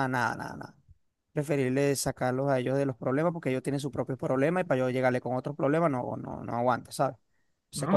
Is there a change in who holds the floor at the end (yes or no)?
yes